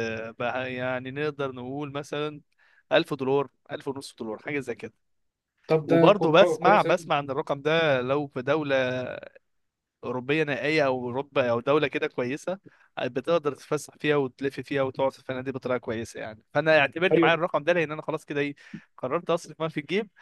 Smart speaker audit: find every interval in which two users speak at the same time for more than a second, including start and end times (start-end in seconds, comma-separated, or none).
5.9-7.1